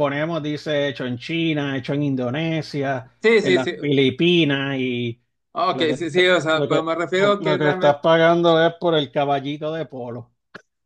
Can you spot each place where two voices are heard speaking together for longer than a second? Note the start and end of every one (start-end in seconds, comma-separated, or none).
5.7-8.0